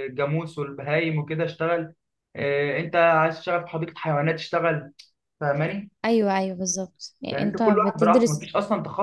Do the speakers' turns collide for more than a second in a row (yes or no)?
yes